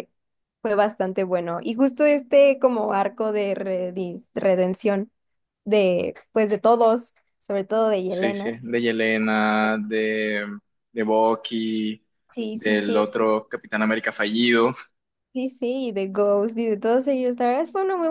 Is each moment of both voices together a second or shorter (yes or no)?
yes